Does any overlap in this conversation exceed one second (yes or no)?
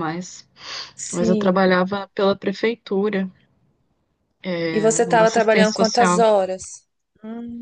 yes